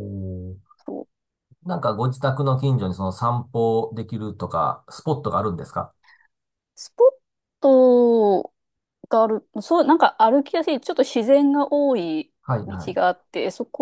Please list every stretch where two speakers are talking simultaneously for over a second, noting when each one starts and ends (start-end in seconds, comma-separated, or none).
none